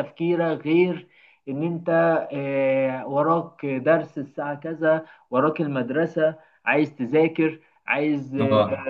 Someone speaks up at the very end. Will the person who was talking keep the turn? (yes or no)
yes